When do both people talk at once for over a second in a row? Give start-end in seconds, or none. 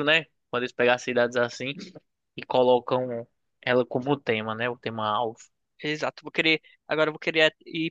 none